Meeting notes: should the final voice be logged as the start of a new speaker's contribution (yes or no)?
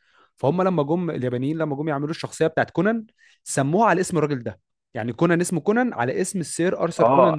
yes